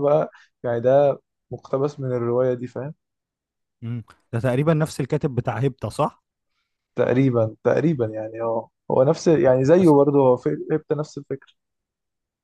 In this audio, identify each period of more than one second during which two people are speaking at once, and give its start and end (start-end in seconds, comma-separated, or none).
none